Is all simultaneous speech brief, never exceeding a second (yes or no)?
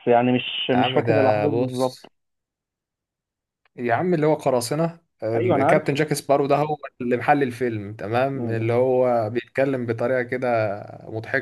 no